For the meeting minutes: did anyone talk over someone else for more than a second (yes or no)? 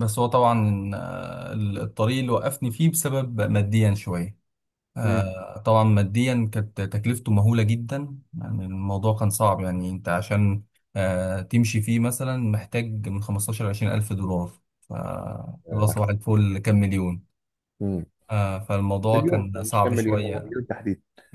yes